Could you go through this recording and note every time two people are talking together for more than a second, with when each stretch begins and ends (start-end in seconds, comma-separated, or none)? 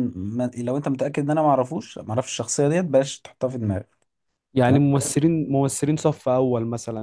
none